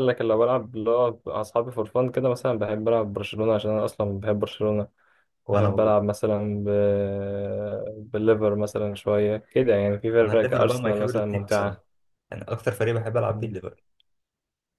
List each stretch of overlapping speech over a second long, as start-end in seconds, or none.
10.2-11.8